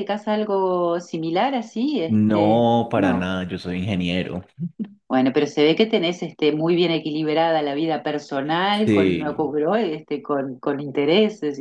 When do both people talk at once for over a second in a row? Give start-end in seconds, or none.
2.1-3.4